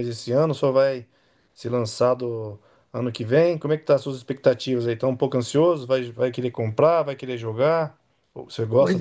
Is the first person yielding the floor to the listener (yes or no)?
yes